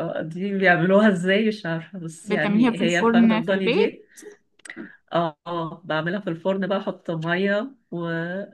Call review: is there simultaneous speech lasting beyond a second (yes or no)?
yes